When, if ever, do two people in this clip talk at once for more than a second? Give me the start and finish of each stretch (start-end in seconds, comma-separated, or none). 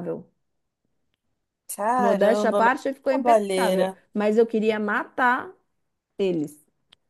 2.0-4.0